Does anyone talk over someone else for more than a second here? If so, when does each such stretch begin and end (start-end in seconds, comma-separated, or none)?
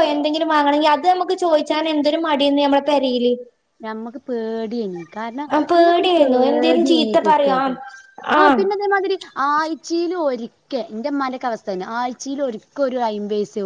5.7-7.6